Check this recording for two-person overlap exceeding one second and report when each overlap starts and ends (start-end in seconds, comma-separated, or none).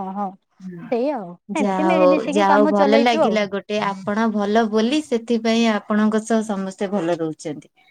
1.6-3.4